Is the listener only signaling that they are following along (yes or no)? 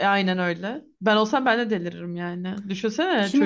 no